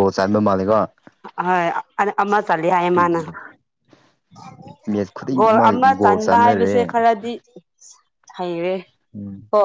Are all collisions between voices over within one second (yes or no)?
no